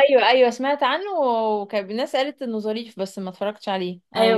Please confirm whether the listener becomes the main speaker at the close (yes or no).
yes